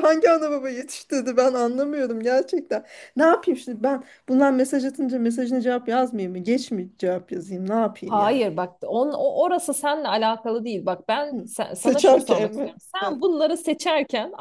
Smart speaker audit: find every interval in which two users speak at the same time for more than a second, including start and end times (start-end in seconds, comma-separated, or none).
11.3-13.2